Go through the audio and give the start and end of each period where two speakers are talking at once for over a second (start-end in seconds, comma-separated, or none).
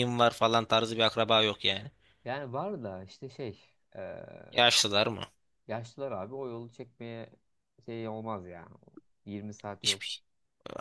none